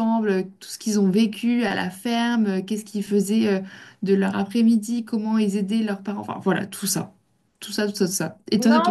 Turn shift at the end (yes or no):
no